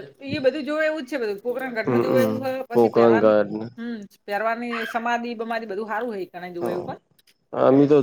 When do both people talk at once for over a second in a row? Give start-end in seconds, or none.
1.9-3.3